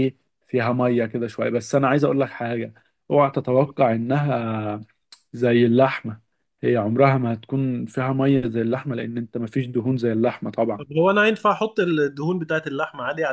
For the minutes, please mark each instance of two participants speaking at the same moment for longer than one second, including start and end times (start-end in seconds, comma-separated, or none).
none